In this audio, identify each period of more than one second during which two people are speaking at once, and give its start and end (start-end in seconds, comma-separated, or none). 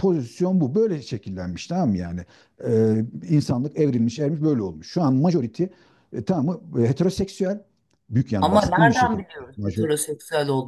8.4-9.9